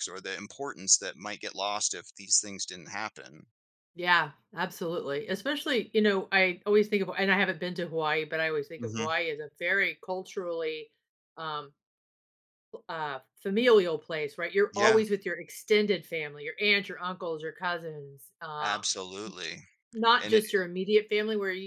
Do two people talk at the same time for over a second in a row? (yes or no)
no